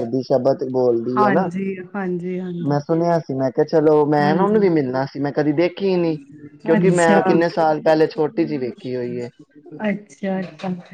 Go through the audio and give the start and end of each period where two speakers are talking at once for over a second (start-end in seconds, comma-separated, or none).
none